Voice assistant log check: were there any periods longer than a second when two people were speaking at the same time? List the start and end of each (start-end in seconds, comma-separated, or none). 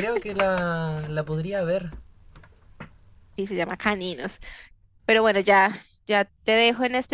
none